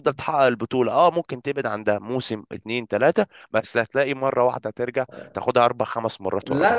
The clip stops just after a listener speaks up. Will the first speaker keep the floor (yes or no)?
no